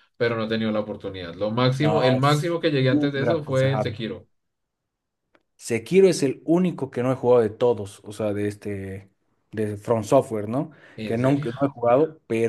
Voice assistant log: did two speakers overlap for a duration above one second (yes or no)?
yes